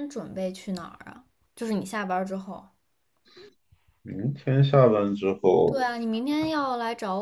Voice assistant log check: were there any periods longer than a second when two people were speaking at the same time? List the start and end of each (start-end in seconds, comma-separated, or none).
none